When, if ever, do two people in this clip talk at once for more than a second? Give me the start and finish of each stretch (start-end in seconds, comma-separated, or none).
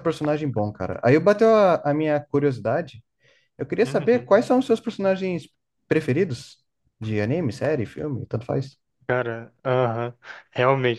none